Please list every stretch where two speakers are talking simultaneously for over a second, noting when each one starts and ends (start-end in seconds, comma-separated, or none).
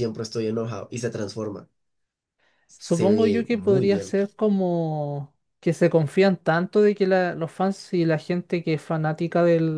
2.8-4.1